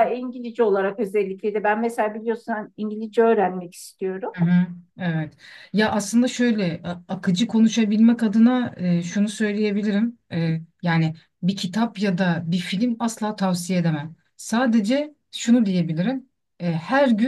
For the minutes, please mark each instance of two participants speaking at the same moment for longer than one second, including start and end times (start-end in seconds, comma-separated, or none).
none